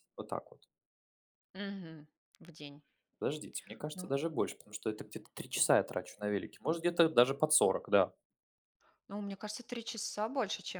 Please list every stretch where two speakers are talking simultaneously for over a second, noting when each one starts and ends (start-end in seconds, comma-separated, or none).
none